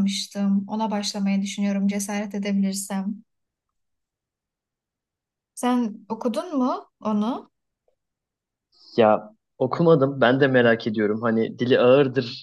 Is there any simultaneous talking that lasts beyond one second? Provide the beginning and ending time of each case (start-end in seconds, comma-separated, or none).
none